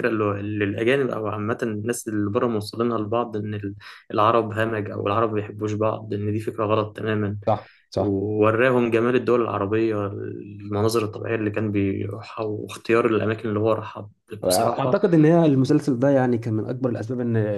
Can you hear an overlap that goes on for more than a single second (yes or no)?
no